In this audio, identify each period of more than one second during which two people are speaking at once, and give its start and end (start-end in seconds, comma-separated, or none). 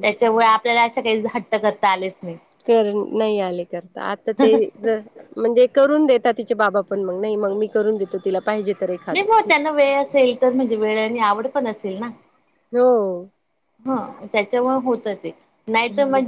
none